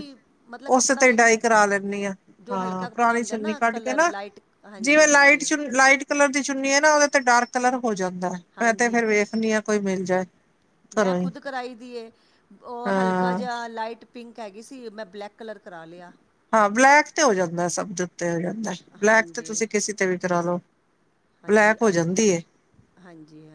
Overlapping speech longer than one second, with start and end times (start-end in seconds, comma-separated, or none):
2.5-4.1